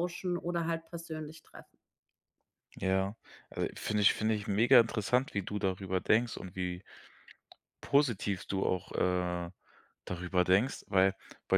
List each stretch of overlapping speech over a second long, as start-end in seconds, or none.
none